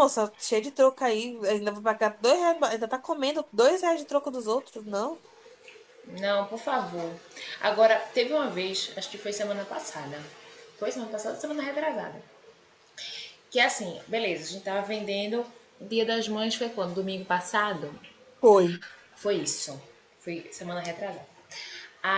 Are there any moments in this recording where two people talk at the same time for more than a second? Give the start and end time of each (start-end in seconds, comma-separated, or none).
none